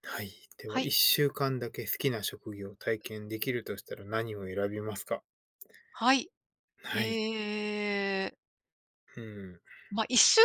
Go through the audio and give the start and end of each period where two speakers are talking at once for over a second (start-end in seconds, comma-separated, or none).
none